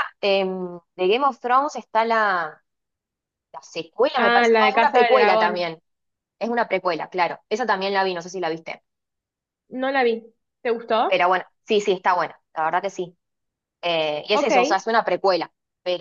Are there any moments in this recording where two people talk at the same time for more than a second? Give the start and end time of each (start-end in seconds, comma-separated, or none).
4.1-5.7